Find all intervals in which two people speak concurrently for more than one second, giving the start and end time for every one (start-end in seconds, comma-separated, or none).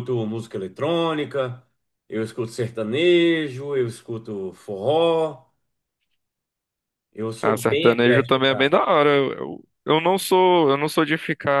7.4-8.8